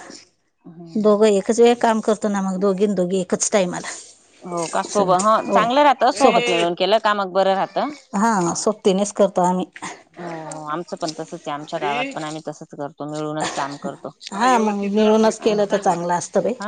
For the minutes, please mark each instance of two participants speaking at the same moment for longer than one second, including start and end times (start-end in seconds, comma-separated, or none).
14.3-16.0